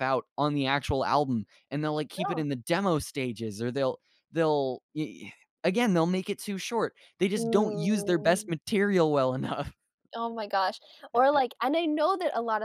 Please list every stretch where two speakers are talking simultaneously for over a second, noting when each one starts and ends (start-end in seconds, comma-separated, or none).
7.4-8.6